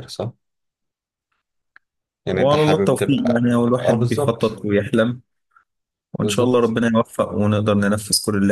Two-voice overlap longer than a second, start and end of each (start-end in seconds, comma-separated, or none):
2.3-4.6